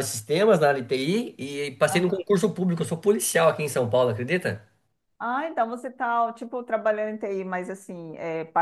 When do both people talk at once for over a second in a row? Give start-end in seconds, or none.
none